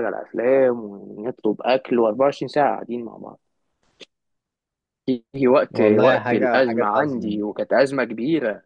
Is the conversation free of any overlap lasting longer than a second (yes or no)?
no